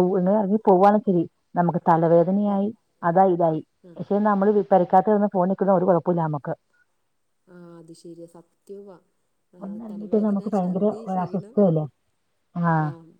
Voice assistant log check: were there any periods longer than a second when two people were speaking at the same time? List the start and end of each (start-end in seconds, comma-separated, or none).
9.6-11.5